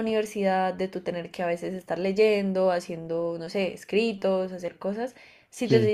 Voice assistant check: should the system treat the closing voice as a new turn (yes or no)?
no